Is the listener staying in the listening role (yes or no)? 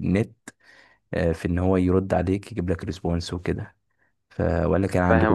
no